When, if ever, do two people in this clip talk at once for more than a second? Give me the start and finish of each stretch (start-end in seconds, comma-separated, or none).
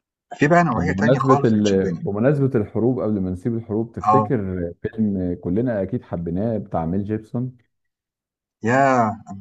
0.8-2.0